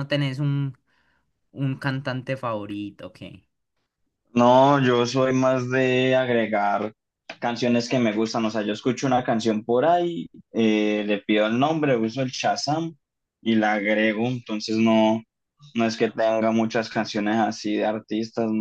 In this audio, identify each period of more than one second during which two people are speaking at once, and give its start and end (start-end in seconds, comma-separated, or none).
none